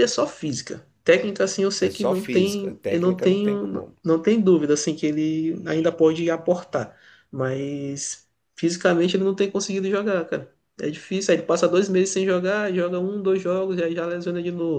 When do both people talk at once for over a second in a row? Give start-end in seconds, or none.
1.8-3.9